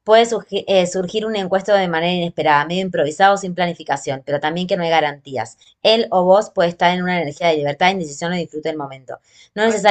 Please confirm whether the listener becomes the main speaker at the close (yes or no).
no